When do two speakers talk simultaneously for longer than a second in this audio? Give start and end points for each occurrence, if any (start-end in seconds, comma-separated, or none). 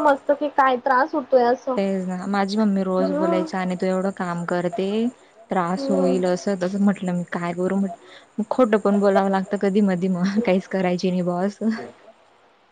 none